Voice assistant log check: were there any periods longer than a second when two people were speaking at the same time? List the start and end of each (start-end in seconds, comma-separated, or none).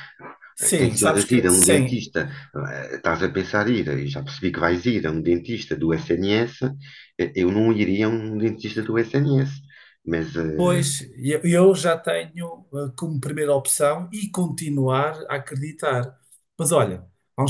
0.8-2.0